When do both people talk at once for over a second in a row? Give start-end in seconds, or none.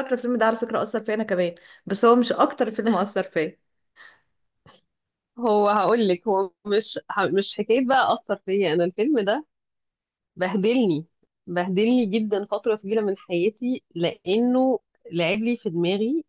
none